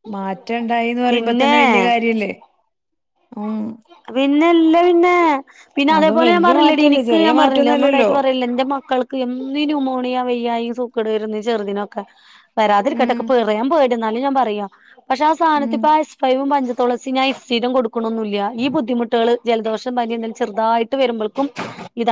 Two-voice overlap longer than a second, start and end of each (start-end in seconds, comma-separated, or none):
6.0-8.1